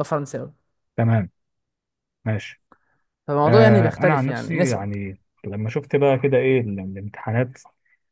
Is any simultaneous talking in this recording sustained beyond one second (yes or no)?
yes